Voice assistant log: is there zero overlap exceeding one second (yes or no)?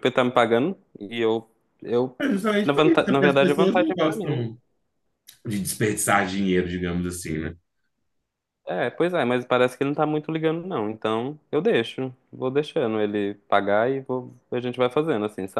no